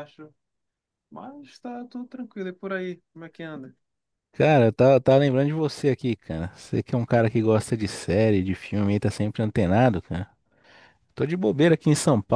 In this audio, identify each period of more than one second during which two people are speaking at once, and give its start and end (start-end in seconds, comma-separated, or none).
none